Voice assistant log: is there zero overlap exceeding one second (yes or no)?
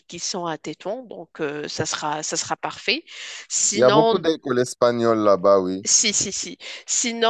yes